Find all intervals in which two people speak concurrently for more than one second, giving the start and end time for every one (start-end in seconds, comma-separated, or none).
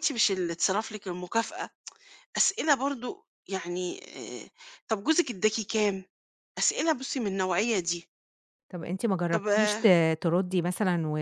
none